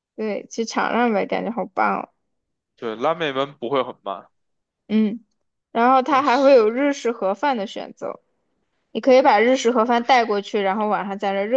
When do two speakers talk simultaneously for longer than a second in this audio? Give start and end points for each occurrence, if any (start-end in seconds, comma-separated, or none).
none